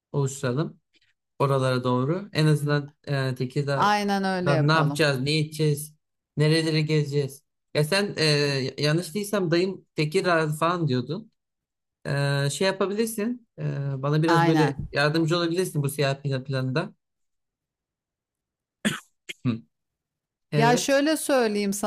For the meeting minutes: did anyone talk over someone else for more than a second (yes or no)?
yes